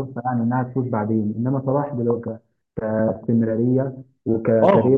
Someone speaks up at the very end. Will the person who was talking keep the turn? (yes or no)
no